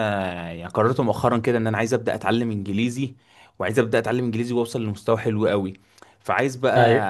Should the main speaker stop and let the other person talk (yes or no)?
no